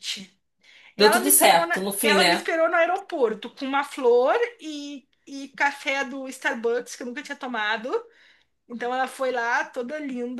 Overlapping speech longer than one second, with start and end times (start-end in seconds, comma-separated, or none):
1.0-2.5